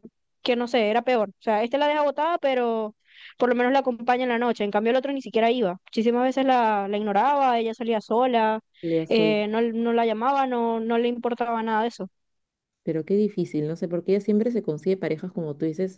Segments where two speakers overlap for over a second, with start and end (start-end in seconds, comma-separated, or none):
none